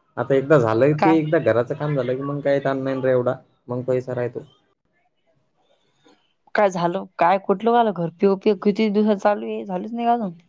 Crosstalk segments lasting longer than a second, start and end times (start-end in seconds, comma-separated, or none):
none